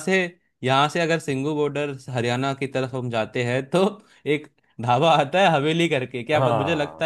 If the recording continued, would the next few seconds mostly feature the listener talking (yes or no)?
no